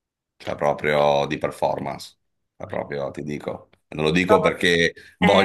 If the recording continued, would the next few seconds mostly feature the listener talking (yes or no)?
no